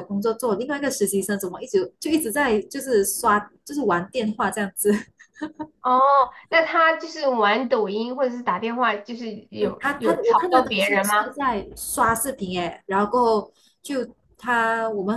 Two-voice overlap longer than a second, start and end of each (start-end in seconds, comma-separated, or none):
9.6-11.3